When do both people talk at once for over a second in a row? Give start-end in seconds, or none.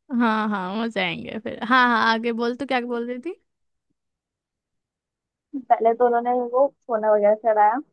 none